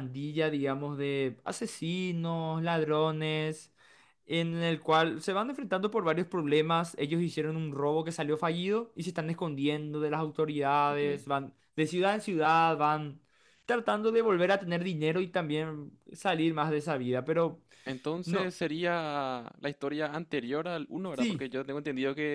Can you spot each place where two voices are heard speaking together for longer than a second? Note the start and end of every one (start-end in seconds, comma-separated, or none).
none